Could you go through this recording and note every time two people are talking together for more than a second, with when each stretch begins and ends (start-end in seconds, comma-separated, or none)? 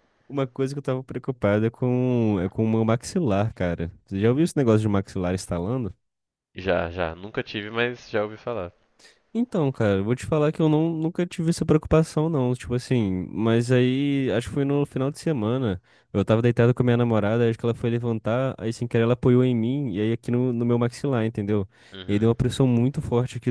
none